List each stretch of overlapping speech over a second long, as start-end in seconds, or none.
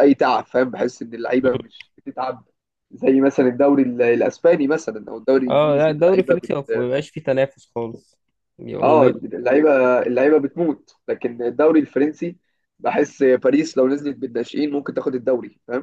5.5-6.9